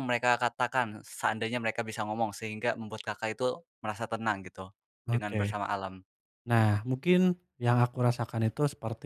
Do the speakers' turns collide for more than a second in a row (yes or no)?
no